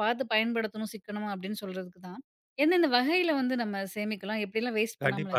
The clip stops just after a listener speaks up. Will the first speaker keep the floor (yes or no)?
no